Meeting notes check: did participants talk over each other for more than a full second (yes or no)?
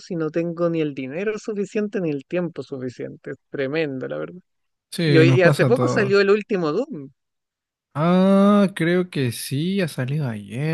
yes